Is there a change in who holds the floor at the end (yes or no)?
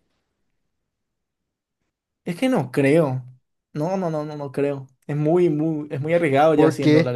yes